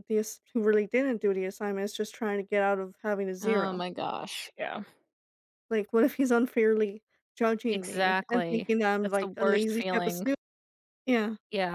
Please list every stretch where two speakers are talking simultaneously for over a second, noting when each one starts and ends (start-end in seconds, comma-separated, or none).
7.7-10.3